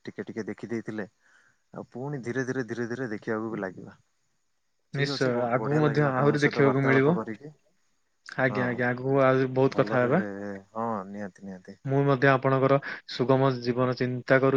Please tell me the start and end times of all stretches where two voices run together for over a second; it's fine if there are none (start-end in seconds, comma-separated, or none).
5.0-7.2